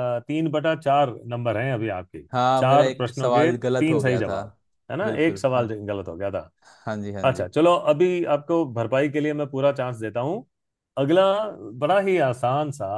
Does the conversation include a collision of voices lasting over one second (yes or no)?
yes